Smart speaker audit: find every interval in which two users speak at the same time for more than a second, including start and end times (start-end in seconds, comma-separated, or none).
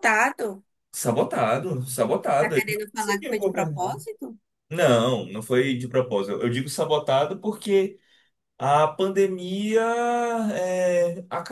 2.4-4.0